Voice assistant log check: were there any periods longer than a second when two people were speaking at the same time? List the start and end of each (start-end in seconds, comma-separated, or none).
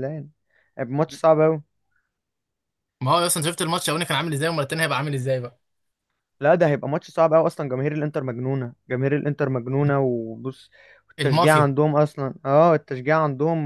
none